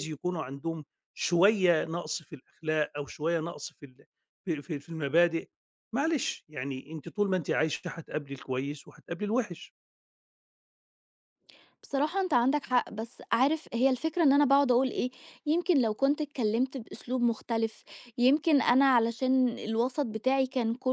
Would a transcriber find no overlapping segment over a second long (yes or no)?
yes